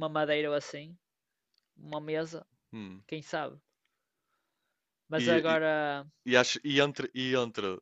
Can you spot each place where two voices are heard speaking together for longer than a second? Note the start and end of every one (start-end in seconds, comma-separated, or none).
none